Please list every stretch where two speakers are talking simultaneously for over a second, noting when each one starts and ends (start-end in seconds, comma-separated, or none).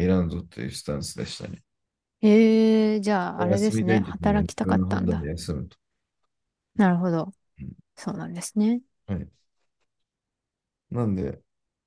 3.4-5.3